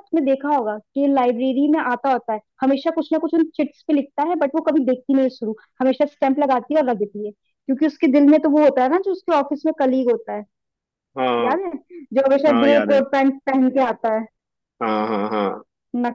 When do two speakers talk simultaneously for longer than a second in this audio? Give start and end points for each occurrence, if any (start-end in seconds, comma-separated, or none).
none